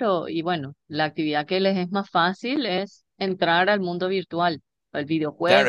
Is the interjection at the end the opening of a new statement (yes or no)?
yes